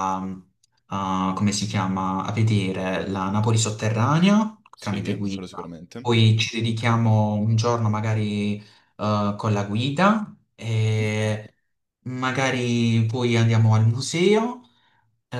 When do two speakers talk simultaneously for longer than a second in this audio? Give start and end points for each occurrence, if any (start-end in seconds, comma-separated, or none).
4.7-6.1